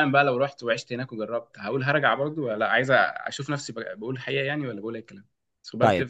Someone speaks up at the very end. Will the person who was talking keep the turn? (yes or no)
no